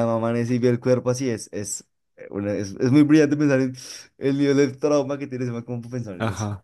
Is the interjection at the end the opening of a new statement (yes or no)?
yes